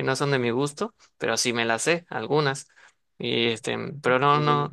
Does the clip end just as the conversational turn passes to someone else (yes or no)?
no